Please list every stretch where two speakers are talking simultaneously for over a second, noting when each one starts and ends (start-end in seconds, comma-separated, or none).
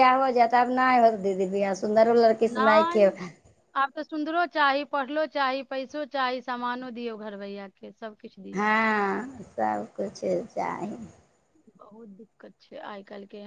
none